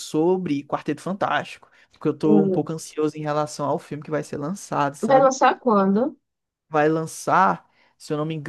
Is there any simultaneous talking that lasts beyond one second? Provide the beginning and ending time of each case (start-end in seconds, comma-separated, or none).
none